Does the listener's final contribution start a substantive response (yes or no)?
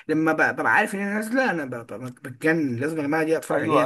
yes